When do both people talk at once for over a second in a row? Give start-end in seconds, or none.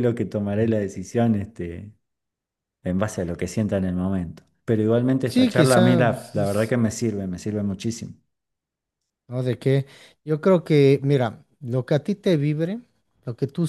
5.3-6.7